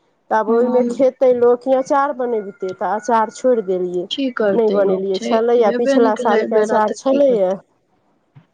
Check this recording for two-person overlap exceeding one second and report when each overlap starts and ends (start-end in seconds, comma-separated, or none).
4.6-7.5